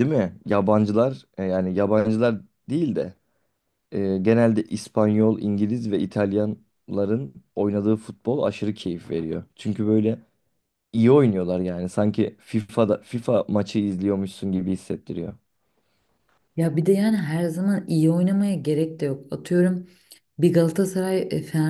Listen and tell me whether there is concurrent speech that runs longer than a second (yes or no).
no